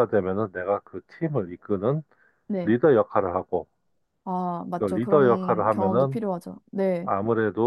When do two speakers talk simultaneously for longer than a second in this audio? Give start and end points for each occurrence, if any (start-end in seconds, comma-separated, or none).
4.8-6.2